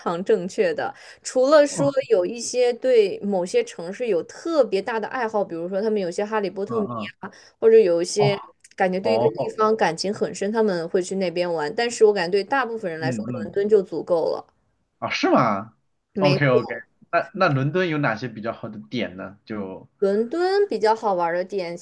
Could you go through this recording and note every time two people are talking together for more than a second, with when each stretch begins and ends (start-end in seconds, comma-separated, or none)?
none